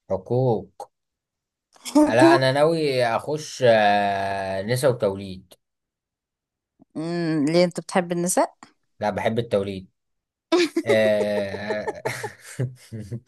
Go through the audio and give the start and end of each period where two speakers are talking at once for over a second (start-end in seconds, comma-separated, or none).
none